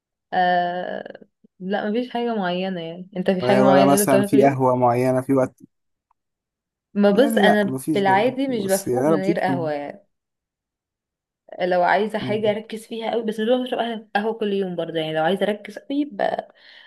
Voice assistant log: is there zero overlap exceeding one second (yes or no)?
no